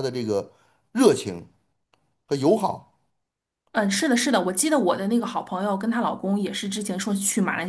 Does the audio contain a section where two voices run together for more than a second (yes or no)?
no